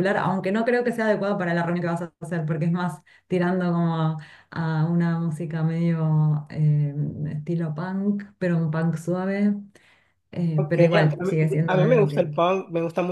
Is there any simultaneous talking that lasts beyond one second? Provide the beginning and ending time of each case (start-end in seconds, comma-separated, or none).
10.5-12.3